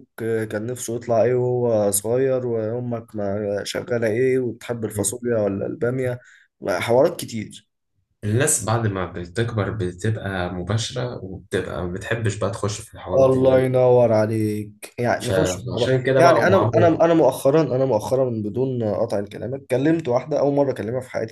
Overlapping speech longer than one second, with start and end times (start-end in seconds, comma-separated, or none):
15.2-16.9